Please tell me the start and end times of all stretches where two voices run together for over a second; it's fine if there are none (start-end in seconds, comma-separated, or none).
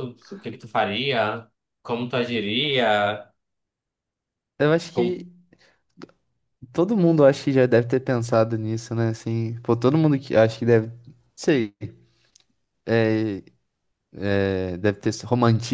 none